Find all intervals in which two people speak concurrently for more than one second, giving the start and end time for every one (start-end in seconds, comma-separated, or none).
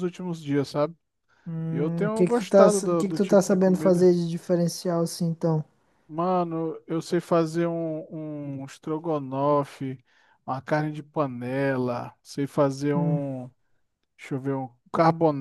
1.7-4.0